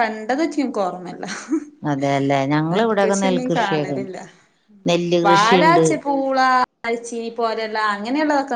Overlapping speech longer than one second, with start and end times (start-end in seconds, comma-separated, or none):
2.7-4.1